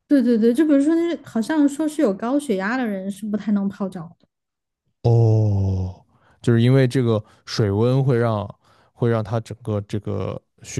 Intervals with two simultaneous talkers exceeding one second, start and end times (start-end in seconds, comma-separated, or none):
none